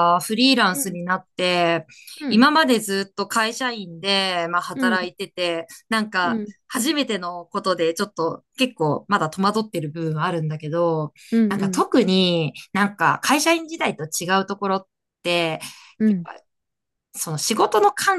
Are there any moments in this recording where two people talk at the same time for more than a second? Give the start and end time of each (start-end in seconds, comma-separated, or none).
none